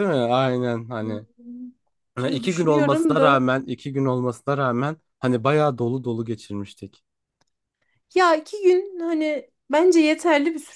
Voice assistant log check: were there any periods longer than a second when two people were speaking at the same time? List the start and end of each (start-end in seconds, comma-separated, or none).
2.2-3.5